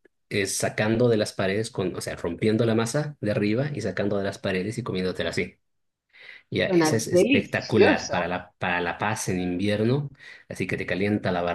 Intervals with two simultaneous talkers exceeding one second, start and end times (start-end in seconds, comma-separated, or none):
6.7-8.2